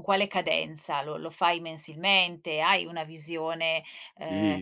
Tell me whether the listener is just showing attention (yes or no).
no